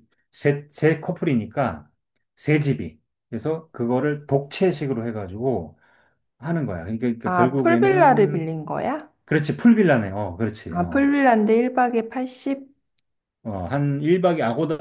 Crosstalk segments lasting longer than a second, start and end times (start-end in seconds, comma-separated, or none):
7.2-8.4